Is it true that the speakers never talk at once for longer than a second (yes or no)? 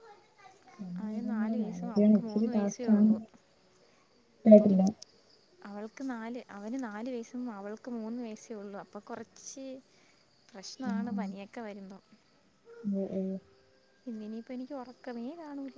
no